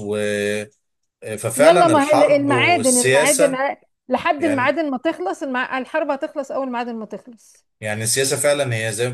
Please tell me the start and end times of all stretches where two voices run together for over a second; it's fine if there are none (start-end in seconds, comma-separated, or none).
1.6-3.6